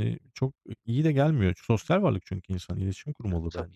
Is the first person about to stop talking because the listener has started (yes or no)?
yes